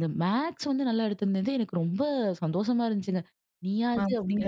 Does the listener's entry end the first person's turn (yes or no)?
no